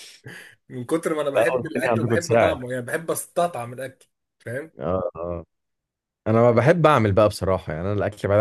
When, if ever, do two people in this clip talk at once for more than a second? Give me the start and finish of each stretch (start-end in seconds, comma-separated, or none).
1.3-2.6